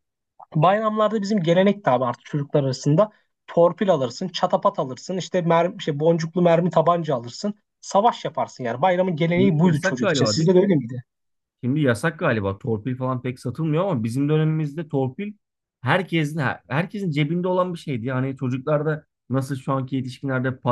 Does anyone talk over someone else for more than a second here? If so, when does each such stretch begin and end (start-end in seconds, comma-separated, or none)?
9.4-10.6